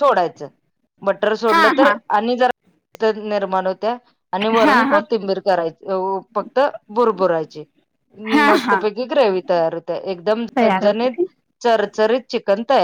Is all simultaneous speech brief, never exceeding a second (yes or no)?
yes